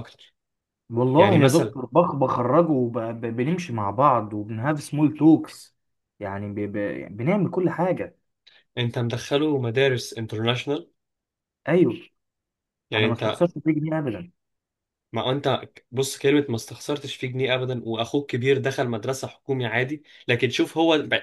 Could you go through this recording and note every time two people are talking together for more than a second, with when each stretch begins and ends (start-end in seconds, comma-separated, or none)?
none